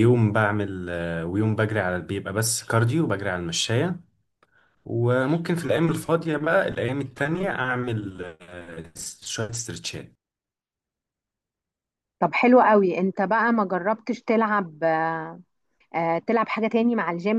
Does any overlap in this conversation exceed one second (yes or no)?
no